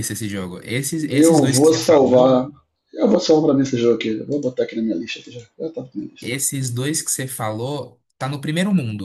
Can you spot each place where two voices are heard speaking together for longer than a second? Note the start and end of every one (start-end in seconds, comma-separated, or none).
1.1-2.4